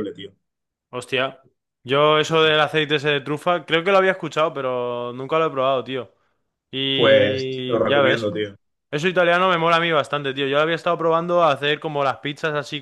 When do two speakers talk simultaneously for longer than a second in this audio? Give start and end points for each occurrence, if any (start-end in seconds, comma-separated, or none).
6.9-8.3